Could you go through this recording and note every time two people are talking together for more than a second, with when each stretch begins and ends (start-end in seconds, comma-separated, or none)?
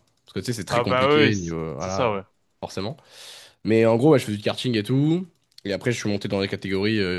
0.7-2.1